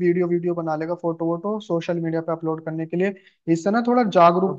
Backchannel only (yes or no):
yes